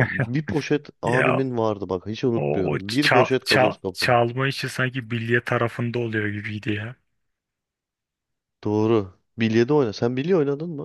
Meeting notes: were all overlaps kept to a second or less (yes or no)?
no